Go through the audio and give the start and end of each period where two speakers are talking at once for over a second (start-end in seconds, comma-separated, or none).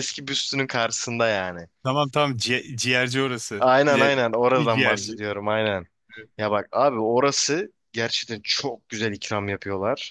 3.6-5.2